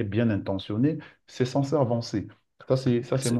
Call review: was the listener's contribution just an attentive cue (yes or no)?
no